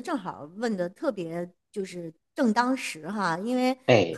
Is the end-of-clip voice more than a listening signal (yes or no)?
no